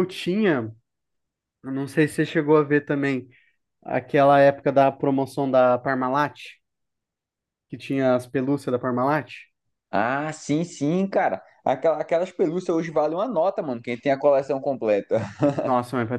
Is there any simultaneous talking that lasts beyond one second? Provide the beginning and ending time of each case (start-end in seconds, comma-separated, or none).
none